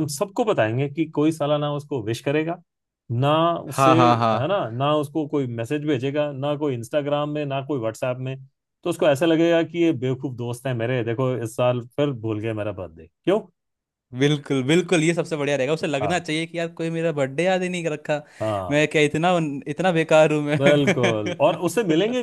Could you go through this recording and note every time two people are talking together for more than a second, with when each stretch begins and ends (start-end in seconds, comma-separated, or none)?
none